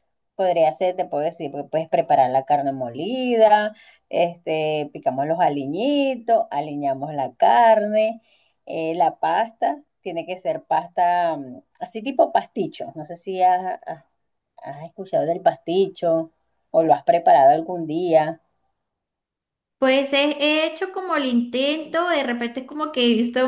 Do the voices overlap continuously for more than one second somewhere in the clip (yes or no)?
no